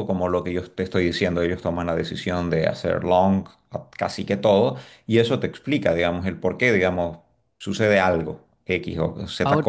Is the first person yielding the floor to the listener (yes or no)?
no